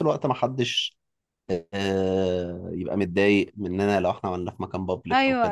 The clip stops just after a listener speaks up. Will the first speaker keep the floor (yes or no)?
no